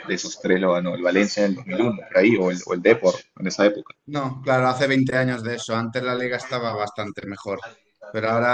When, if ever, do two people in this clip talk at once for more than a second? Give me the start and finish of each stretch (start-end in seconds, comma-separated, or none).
none